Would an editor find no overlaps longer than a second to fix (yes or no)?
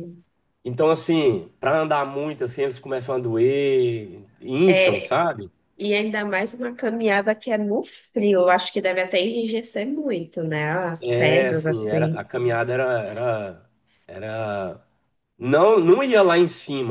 no